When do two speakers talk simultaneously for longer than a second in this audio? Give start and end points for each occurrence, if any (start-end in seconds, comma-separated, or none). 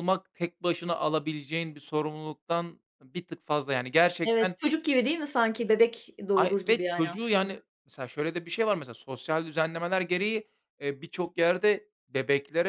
6.3-7.6